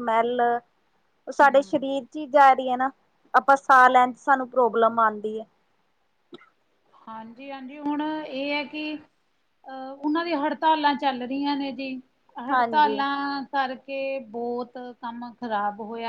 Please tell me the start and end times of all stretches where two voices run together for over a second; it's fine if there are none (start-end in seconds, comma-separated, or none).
none